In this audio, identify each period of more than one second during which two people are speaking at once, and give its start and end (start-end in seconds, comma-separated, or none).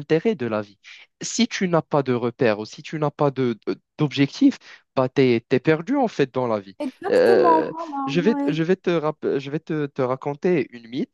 6.8-8.6